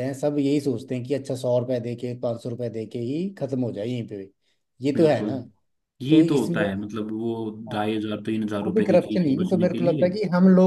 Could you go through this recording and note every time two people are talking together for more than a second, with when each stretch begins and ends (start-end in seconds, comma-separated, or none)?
8.7-10.1